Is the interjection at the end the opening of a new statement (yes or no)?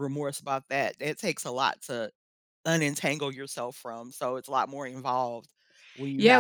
yes